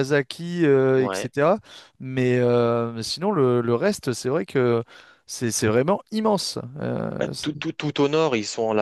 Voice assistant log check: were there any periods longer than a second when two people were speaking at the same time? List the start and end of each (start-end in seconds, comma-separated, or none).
none